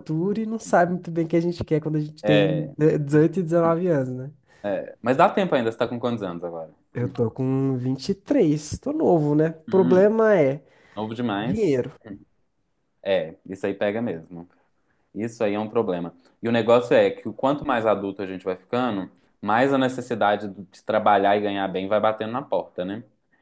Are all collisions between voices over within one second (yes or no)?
yes